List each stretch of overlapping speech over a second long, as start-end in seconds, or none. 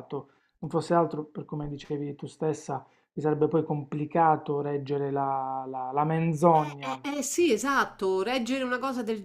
none